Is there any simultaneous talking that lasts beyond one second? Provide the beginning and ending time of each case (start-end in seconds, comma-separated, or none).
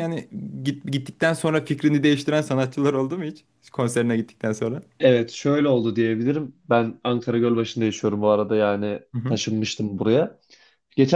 none